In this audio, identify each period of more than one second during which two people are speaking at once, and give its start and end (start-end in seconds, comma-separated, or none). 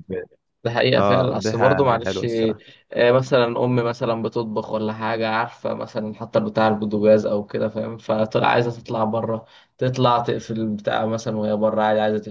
1.0-2.2